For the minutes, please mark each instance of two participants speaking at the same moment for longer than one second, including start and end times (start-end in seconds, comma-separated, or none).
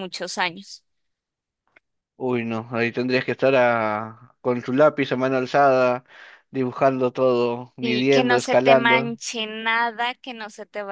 7.8-9.1